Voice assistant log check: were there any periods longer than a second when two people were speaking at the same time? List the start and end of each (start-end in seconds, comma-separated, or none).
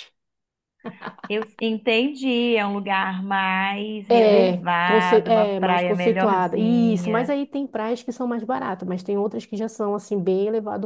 4.1-7.4